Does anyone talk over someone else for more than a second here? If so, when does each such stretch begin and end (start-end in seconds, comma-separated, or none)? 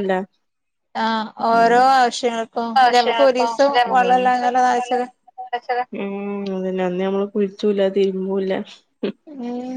2.8-5.1